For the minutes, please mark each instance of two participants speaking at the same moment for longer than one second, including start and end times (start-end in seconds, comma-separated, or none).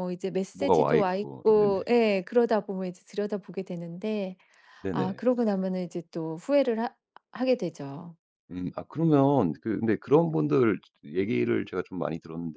0.5-1.8